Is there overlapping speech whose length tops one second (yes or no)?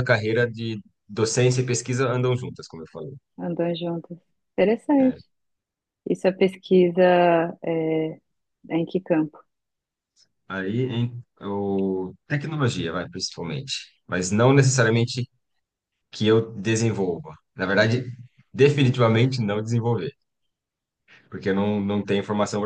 no